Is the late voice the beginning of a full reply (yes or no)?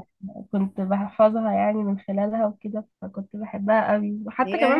no